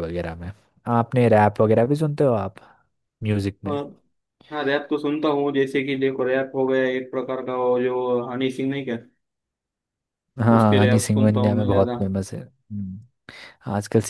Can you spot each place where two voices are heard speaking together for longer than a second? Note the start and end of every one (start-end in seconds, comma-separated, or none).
10.6-12.0